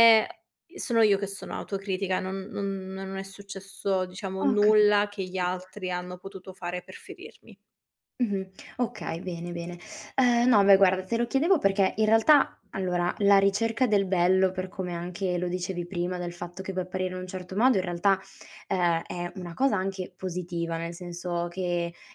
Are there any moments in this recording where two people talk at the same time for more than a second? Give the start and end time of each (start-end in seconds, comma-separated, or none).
4.4-5.7